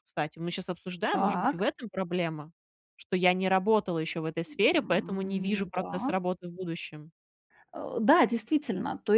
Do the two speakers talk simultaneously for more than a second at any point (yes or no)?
yes